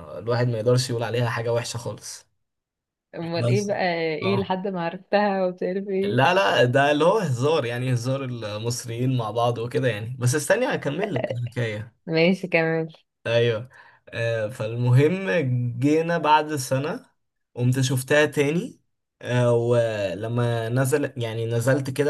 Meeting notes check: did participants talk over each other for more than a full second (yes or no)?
no